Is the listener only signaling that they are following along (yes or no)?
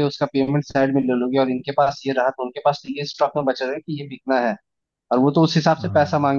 yes